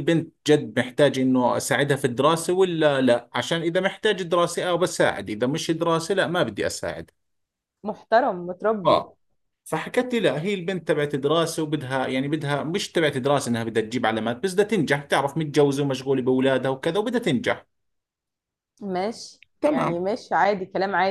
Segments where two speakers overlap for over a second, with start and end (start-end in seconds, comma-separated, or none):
none